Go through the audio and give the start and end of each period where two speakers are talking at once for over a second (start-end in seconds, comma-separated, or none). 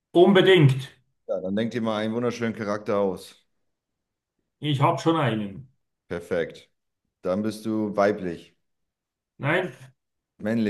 none